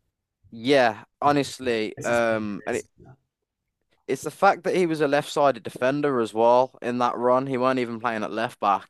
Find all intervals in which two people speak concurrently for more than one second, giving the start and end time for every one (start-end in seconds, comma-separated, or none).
1.2-2.8